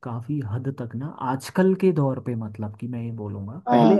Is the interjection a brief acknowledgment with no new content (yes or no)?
yes